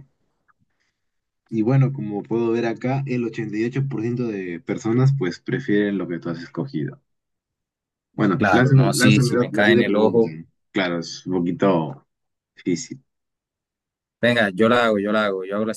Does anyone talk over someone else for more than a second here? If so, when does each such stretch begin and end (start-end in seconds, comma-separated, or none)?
8.4-10.3